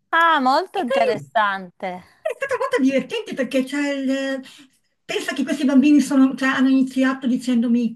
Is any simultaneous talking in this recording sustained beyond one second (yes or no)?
no